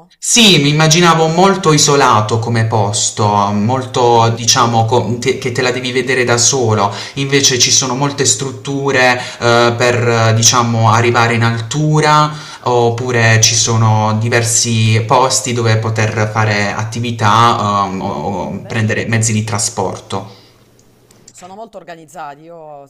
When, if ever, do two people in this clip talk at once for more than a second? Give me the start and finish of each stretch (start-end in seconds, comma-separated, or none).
none